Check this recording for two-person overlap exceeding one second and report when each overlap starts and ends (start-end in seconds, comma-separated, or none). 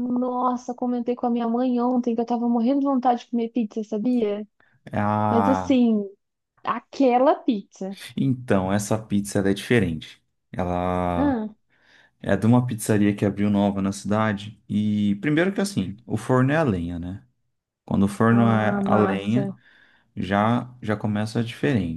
18.3-19.5